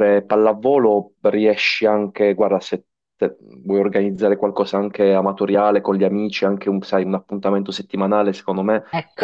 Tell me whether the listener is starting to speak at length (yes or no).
no